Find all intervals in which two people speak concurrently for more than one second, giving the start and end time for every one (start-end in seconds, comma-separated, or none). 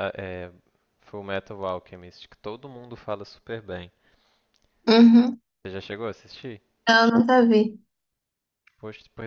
none